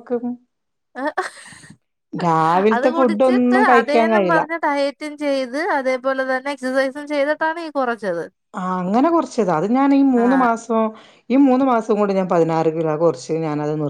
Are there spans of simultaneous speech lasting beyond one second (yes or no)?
yes